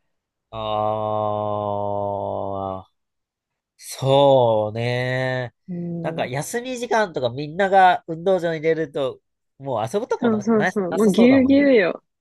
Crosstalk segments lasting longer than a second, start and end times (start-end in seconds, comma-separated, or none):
10.2-11.7